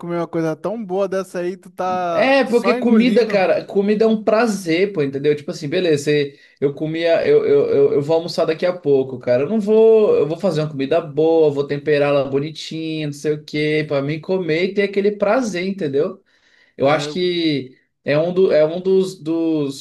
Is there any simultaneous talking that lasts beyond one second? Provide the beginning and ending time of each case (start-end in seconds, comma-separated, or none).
2.1-3.5